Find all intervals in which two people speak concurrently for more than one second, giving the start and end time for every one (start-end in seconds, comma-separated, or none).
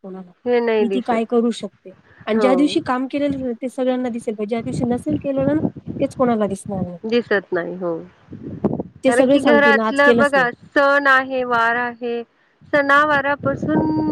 9.1-10.5